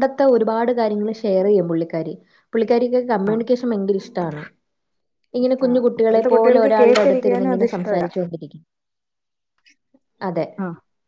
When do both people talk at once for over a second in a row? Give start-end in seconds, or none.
5.4-8.1